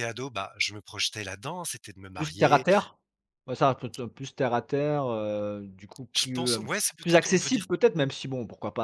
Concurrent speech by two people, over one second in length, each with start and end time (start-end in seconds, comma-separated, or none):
6.1-7.7